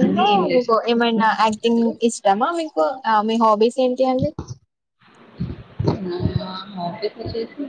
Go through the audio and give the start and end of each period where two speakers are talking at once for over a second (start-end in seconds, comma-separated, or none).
0.5-1.9